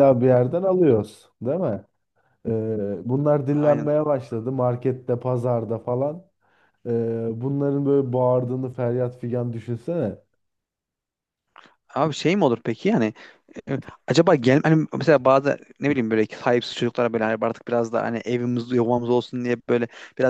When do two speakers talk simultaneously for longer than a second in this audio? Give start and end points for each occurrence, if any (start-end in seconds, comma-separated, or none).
none